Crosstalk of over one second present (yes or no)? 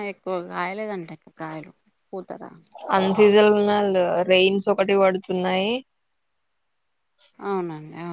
no